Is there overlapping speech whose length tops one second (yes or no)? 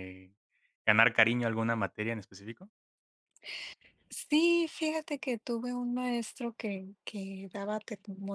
no